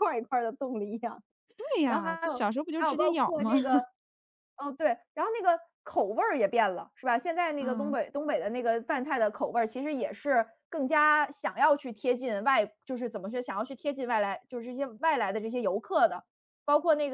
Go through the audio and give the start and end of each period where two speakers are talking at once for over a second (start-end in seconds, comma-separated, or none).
1.9-3.5